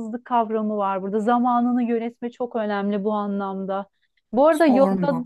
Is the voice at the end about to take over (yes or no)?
no